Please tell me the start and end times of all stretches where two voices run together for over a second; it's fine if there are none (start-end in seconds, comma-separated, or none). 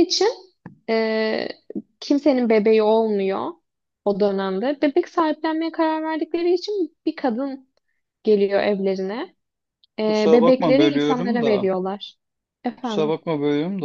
10.1-11.7